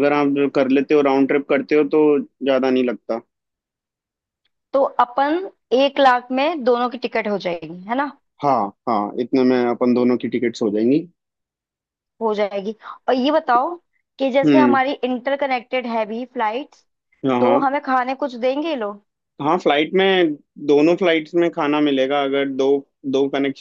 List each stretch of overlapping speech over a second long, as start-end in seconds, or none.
none